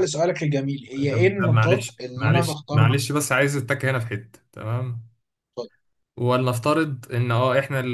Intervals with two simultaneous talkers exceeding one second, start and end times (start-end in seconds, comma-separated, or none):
1.0-2.9